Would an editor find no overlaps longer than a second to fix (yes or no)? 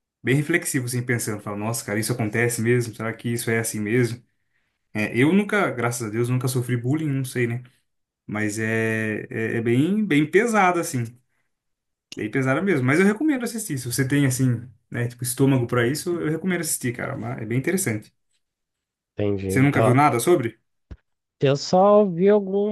yes